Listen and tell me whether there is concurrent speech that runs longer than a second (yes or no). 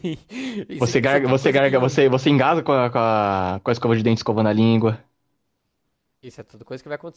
yes